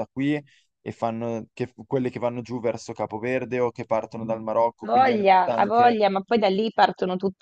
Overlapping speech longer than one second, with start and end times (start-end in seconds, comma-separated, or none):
4.8-6.0